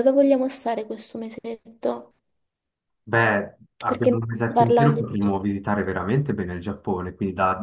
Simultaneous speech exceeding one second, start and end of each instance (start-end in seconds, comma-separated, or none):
3.9-5.2